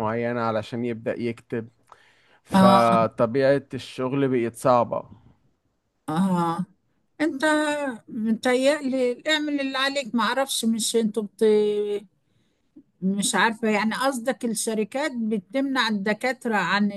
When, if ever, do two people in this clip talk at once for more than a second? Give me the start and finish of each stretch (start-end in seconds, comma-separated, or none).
none